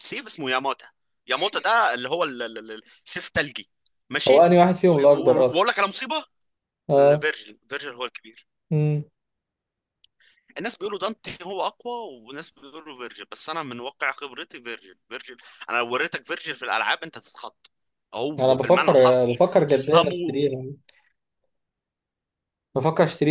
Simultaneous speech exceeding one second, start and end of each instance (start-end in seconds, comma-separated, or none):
18.4-20.5